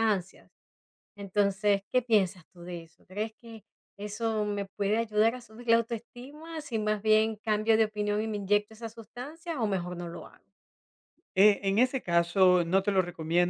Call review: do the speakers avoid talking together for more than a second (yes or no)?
yes